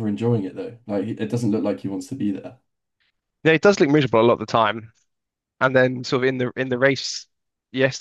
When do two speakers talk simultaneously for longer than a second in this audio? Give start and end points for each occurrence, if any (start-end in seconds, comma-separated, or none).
none